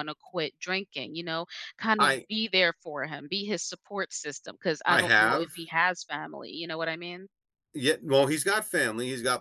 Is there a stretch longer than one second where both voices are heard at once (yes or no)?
no